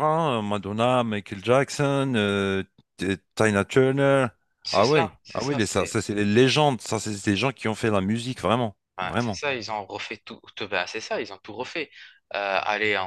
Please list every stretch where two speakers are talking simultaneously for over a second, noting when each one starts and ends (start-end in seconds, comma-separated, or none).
4.7-6.0